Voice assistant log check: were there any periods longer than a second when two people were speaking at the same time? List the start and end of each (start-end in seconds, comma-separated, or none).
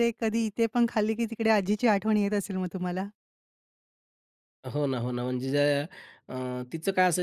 none